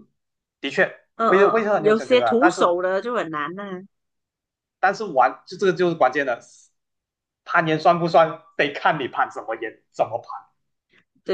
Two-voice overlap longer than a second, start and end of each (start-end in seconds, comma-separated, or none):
1.2-2.8